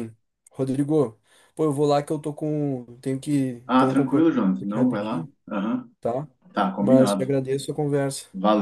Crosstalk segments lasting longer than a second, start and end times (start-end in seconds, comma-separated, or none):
3.7-5.3